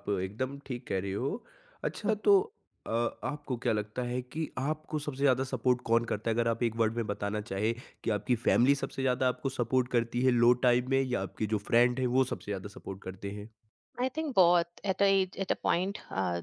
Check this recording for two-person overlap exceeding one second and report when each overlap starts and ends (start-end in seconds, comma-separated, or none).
none